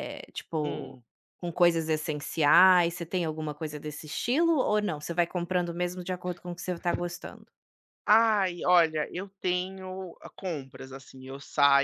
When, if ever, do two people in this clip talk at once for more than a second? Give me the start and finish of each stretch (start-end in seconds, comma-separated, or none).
none